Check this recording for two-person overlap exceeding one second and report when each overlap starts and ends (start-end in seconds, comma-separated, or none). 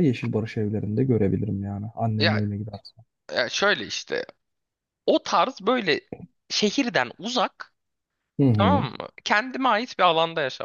none